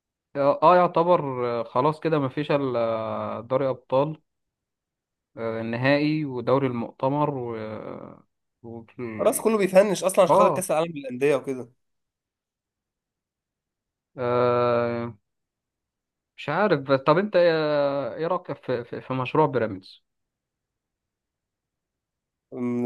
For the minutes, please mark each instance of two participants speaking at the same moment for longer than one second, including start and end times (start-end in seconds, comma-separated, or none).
none